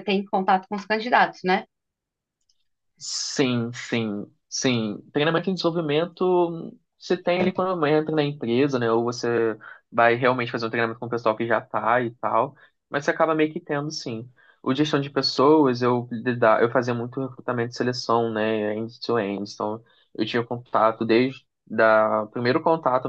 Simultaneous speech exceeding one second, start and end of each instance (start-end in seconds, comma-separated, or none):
none